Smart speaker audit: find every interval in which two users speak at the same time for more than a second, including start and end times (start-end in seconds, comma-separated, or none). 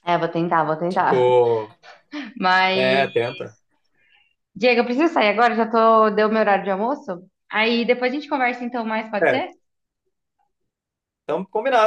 none